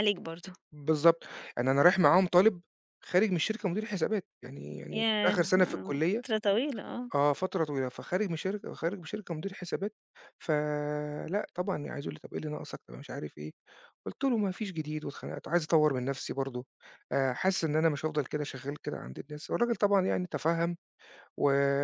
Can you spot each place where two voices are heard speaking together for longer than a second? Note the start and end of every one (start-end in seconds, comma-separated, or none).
4.9-6.2